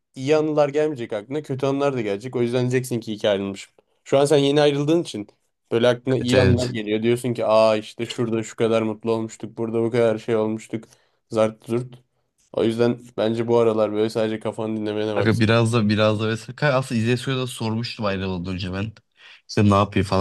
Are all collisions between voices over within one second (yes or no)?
yes